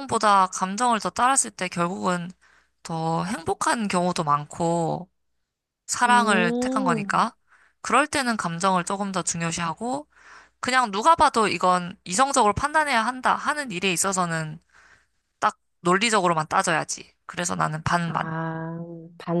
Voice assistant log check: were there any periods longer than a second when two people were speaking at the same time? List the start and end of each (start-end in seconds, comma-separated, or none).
6.1-7.3